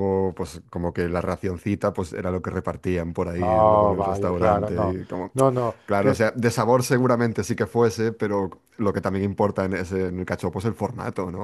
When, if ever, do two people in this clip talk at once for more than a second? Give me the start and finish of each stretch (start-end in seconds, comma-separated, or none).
3.4-5.0